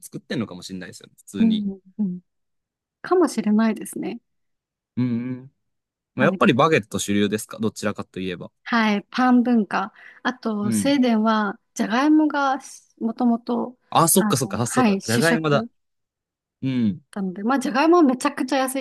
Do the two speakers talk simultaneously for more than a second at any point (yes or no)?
yes